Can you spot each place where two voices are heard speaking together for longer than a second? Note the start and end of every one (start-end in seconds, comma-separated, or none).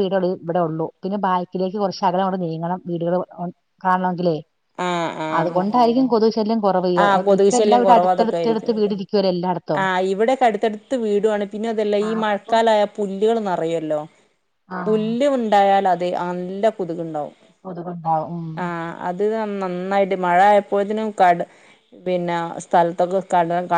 7.4-8.7